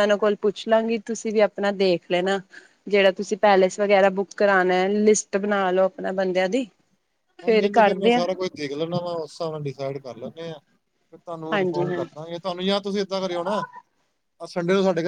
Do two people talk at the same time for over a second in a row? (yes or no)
no